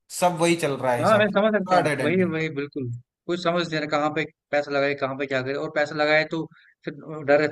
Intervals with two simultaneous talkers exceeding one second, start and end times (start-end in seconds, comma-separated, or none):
1.0-2.3